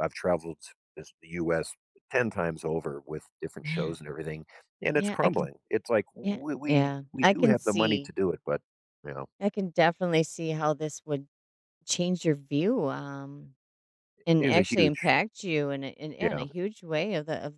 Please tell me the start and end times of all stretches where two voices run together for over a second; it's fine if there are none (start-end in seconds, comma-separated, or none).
6.2-8.1